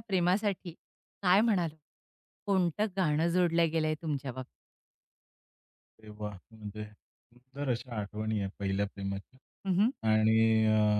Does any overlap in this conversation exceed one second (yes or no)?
no